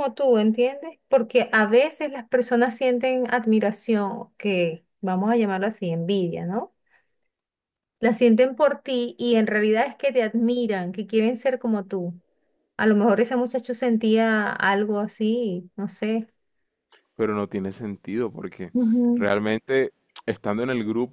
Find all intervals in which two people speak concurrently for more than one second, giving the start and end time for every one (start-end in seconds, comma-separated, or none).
none